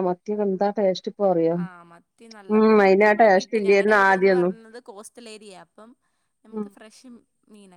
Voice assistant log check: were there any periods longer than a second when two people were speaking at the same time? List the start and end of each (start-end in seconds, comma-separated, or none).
2.5-4.5